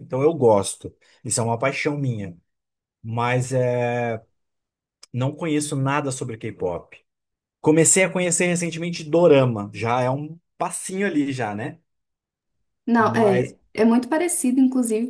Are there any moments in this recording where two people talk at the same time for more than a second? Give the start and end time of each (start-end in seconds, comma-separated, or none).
none